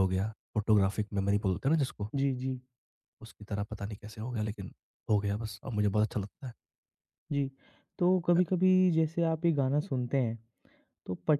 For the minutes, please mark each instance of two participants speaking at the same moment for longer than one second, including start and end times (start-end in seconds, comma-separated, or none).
none